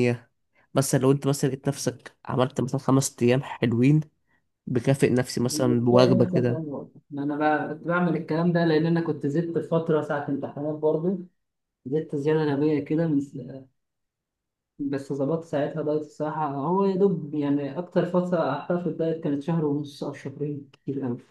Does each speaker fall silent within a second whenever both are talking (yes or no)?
no